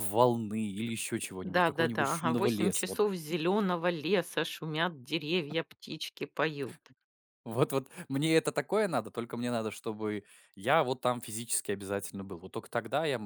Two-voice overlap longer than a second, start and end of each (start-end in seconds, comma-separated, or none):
1.4-3.0